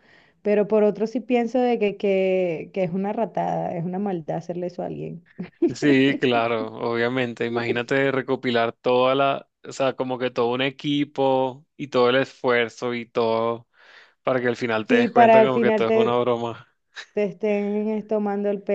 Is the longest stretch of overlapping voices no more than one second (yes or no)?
no